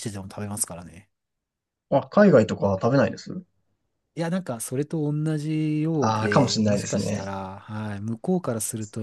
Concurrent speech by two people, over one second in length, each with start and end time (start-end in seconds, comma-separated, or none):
6.0-7.3